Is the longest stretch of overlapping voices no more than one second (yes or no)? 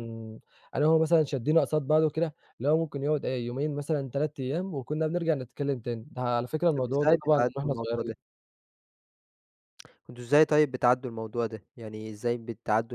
no